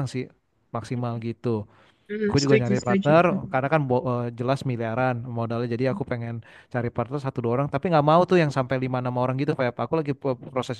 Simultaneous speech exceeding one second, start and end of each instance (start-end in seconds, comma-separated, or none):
2.2-3.6